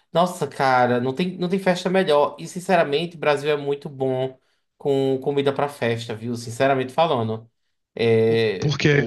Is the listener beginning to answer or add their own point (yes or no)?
no